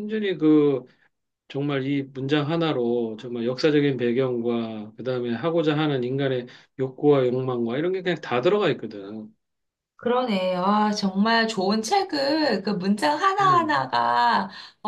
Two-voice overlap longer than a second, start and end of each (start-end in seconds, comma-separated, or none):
none